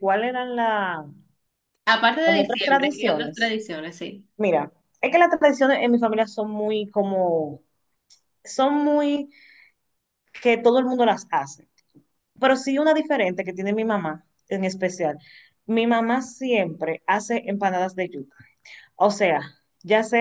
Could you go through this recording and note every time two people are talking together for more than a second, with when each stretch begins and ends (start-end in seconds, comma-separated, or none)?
2.2-3.5